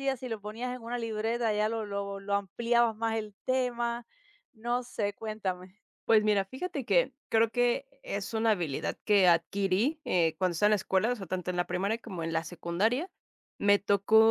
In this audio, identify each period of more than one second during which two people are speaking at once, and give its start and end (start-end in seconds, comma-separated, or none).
none